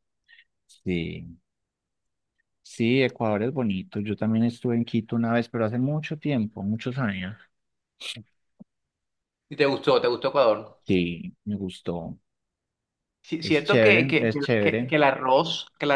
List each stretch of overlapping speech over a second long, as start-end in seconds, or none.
13.4-14.9